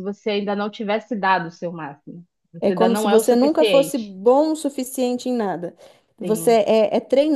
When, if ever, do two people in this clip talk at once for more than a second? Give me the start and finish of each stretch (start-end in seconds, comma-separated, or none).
2.6-4.1